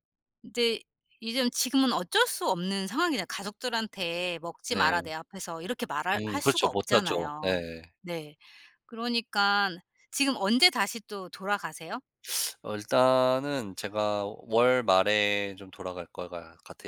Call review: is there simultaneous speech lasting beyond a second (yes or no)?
yes